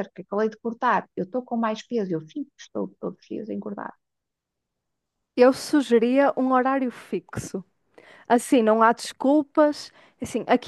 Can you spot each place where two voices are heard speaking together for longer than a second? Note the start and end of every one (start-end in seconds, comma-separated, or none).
none